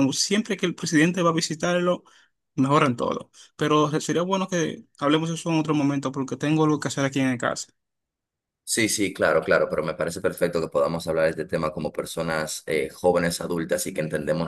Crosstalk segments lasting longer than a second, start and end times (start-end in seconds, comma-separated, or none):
none